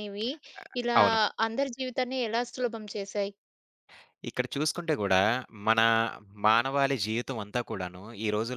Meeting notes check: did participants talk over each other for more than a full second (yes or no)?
no